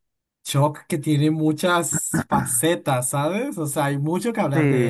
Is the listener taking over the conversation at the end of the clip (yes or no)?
yes